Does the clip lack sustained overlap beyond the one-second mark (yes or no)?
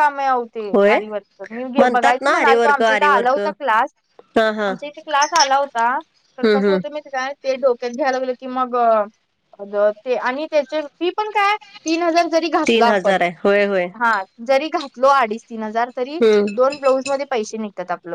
no